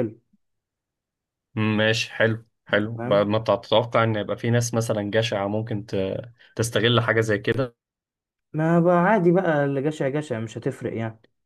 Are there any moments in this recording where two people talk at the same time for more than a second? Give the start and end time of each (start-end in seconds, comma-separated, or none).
none